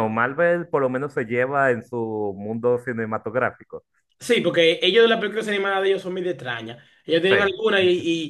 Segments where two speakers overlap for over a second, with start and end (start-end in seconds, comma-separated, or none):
none